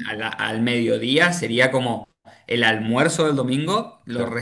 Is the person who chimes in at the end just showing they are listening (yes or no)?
yes